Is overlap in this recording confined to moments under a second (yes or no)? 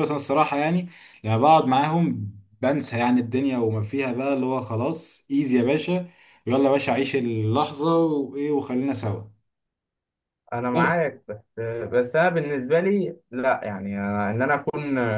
yes